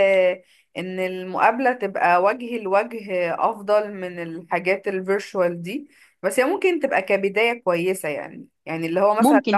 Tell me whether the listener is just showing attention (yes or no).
yes